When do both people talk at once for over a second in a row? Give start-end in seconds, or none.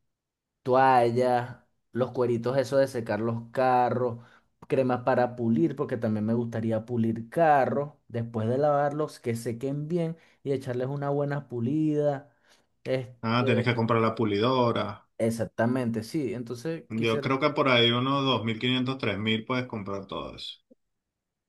none